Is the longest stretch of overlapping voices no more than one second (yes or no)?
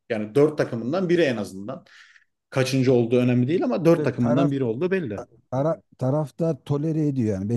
yes